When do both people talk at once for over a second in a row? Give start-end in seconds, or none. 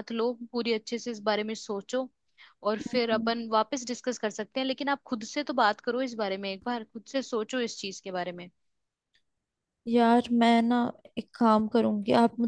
none